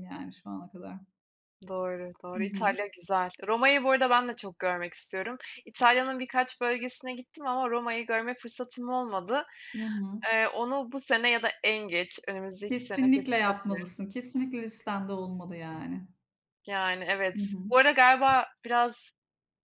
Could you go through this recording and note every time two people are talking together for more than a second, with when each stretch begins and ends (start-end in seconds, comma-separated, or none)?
12.7-13.9